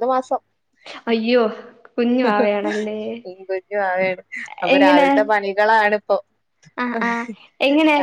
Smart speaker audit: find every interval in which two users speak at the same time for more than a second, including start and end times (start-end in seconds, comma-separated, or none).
none